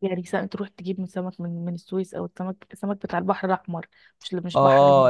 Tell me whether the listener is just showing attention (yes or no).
no